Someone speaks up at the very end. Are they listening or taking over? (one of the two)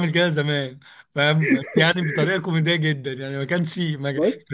listening